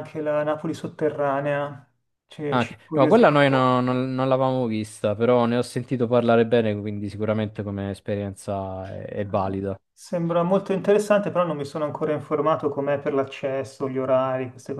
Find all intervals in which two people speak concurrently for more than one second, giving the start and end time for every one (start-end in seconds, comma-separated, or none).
2.5-4.0